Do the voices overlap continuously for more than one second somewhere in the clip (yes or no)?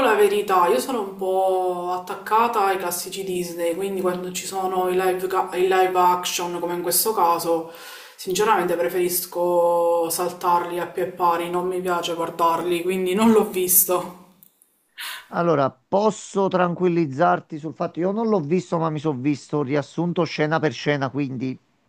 no